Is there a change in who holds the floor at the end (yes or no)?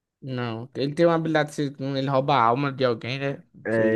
yes